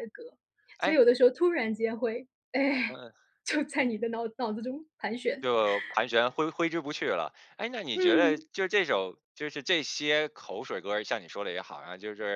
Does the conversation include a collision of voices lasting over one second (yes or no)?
no